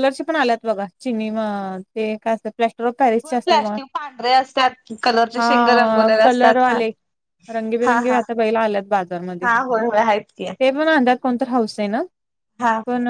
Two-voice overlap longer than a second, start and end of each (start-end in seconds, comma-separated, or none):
5.4-6.8